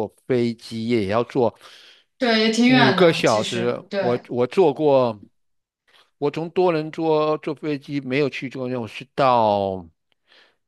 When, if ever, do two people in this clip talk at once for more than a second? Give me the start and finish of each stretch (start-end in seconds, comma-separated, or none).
2.6-4.2